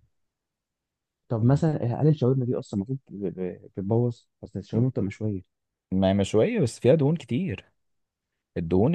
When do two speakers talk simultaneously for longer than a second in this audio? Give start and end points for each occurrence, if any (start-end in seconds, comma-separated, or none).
none